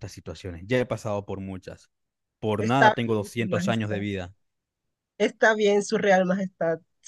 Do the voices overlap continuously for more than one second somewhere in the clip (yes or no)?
yes